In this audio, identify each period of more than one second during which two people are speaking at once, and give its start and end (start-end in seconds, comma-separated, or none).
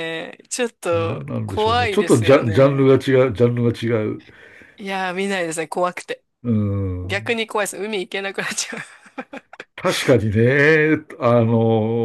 0.9-2.9